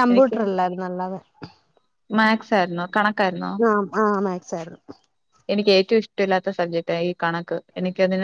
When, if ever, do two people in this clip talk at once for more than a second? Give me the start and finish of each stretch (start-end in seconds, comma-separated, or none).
none